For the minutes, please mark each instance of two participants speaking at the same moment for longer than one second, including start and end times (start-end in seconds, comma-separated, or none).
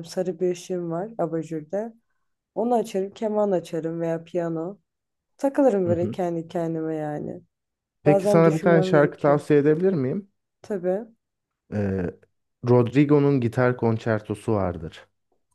8.0-9.4